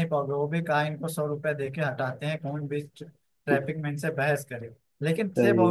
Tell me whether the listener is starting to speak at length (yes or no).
no